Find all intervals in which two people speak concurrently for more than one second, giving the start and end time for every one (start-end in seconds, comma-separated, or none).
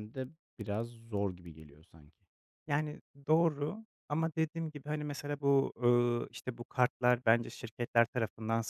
none